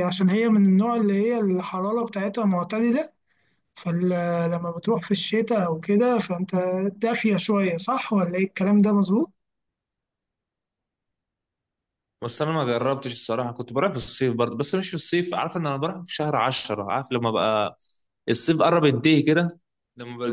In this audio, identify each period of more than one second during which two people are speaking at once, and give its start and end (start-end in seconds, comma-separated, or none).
none